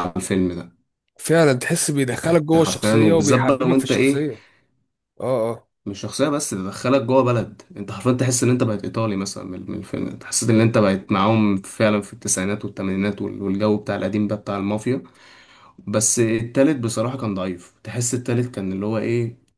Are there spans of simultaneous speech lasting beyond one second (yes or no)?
yes